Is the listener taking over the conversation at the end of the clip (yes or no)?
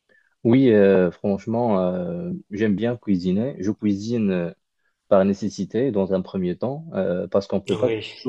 no